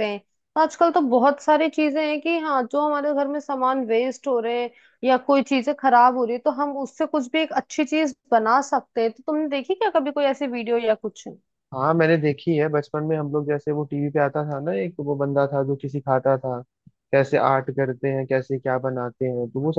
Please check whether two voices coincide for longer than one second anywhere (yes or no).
no